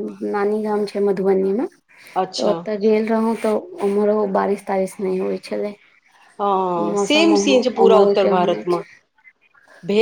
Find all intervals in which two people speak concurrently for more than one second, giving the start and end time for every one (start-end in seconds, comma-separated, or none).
6.9-8.8